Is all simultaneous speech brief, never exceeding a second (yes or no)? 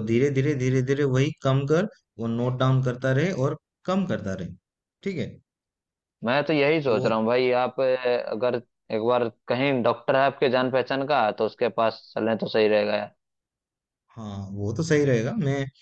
yes